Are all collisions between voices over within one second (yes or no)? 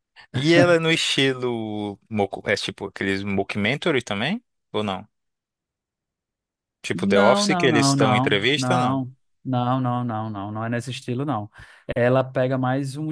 no